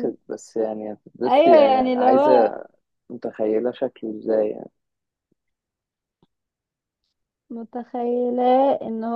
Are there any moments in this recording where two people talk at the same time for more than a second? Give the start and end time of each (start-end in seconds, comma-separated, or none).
1.2-2.5